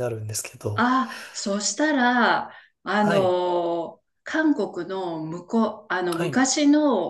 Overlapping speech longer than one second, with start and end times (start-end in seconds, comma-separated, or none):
none